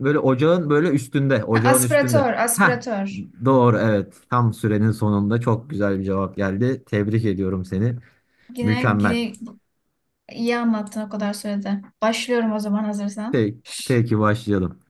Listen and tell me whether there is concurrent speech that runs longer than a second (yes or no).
yes